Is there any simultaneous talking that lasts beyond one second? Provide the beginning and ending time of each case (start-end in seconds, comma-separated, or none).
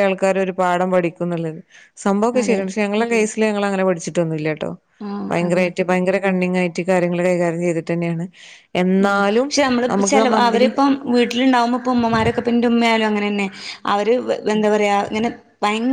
none